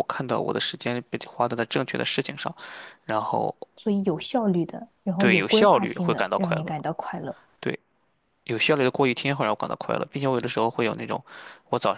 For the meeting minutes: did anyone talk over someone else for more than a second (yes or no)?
yes